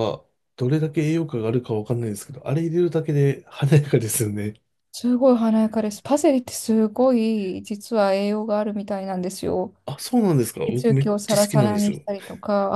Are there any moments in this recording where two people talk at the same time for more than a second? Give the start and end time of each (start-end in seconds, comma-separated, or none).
10.6-12.1